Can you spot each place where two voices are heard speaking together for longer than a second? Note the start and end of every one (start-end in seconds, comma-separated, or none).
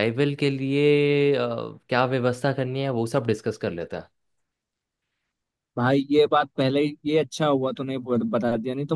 none